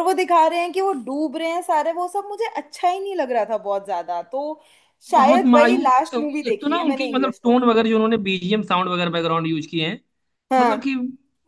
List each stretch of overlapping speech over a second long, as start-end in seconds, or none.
5.2-7.6